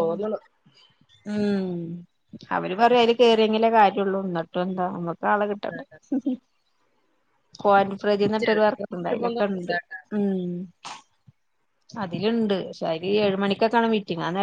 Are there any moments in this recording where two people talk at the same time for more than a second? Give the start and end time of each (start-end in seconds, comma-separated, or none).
8.4-9.7